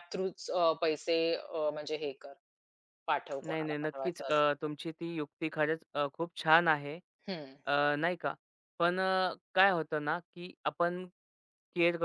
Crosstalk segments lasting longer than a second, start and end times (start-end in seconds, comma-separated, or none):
3.5-4.8